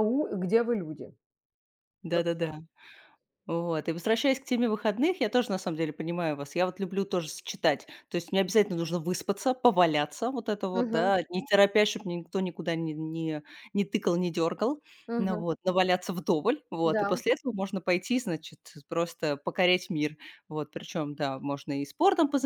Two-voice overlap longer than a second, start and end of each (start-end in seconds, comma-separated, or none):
none